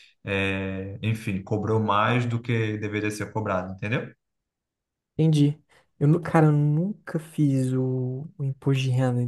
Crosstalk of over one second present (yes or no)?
no